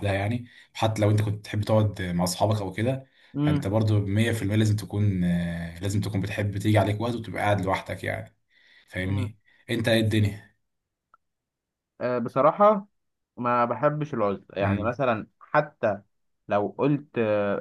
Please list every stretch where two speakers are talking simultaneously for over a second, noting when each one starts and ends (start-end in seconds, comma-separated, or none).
none